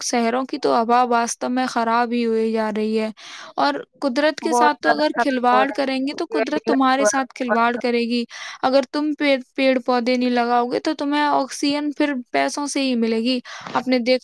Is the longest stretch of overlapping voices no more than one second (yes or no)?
no